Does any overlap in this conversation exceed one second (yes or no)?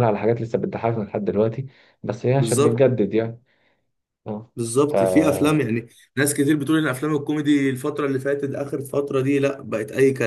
no